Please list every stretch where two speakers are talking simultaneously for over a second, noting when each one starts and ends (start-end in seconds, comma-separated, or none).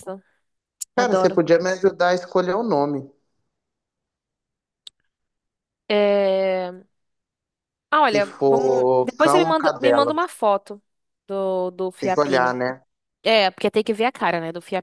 8.1-10.1